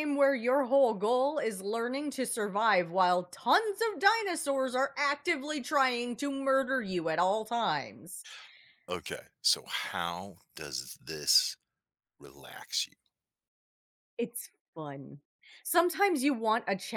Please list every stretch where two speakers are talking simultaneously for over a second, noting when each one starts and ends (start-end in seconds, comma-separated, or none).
none